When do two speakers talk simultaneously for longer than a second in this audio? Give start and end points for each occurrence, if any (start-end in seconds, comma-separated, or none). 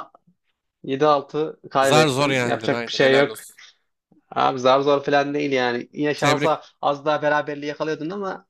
1.9-3.3